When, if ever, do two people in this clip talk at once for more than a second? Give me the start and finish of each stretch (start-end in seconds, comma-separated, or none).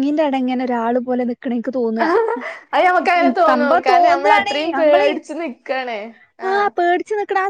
3.5-5.1